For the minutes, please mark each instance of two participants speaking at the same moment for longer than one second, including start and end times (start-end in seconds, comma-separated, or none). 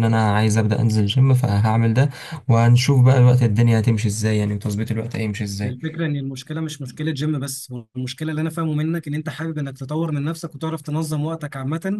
none